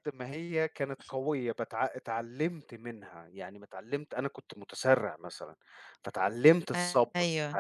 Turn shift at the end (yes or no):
no